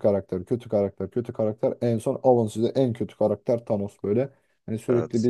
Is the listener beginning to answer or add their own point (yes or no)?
no